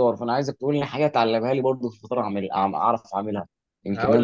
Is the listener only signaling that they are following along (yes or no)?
no